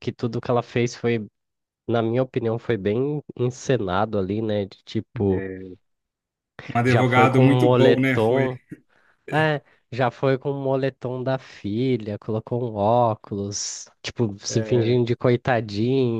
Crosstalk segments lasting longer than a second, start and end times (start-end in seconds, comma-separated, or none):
6.9-8.5